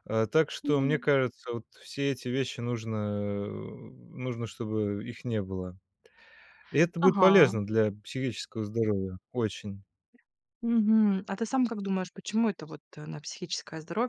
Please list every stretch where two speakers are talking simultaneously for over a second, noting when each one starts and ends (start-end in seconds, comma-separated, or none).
none